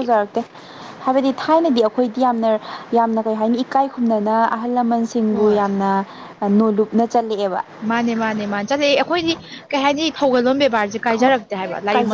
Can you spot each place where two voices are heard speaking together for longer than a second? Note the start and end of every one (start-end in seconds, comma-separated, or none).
none